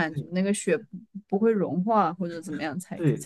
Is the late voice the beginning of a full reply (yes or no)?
yes